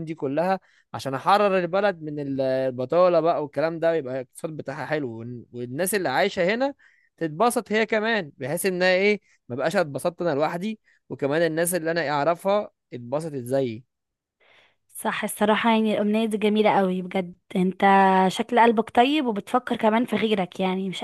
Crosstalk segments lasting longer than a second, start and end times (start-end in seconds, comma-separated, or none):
none